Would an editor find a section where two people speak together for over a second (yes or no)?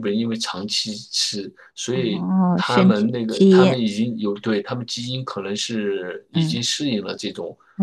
yes